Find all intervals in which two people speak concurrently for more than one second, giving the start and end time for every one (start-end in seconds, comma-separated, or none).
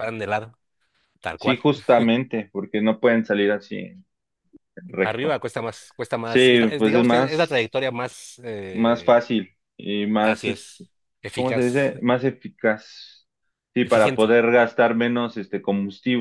6.2-7.7